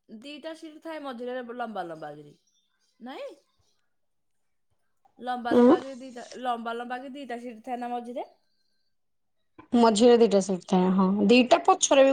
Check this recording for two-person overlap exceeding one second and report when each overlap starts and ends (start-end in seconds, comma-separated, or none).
none